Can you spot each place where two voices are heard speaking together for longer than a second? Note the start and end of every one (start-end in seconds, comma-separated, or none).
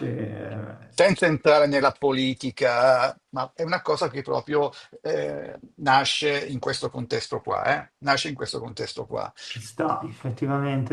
none